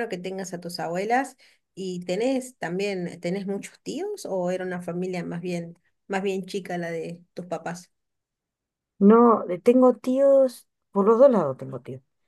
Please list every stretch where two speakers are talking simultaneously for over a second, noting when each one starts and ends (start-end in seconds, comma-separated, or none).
none